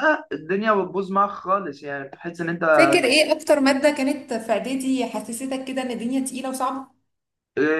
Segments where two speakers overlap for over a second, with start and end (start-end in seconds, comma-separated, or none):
none